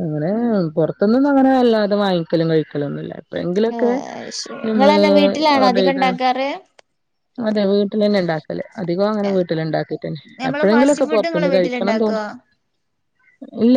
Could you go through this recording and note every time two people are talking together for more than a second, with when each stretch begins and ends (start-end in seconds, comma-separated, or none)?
10.4-12.2